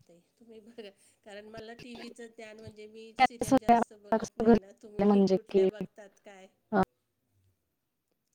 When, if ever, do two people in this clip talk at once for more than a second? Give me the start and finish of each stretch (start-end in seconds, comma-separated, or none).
3.5-5.7